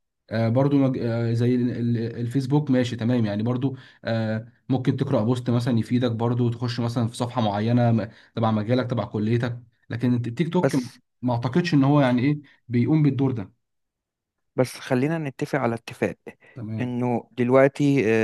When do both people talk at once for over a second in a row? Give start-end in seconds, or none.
none